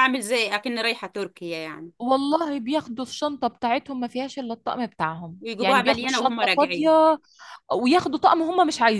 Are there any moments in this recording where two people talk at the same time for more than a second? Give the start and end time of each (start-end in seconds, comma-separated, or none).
5.4-6.9